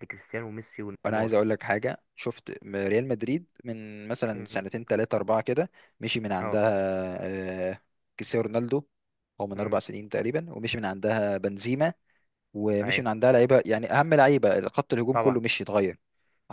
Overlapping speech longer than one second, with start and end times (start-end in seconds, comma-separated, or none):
none